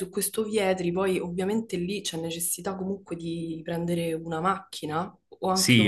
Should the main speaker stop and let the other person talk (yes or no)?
yes